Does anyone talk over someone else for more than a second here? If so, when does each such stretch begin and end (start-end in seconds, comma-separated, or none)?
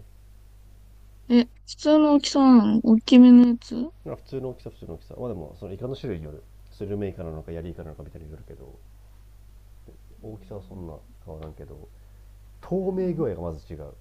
none